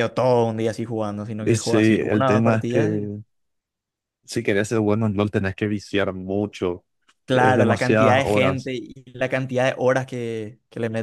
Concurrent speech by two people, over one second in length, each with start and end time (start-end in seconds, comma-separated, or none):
1.4-3.1, 7.3-8.7